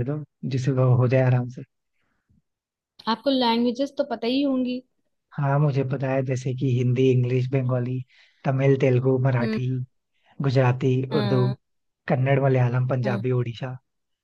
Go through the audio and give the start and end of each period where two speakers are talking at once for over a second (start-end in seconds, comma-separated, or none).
none